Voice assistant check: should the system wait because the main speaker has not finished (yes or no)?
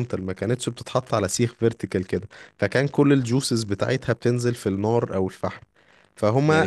no